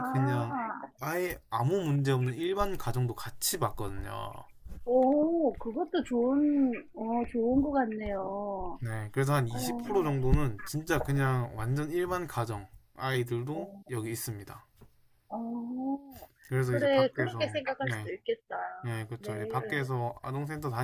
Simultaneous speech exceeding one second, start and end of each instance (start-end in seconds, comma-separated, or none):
16.6-18.1